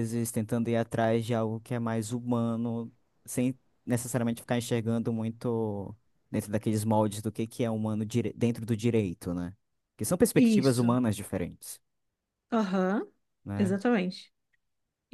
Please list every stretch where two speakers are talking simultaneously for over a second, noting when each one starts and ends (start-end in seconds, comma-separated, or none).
none